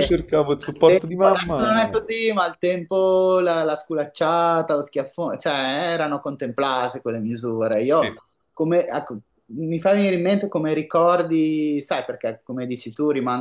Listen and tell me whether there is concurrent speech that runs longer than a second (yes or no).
yes